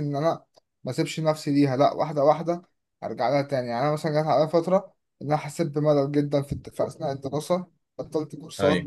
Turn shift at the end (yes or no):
no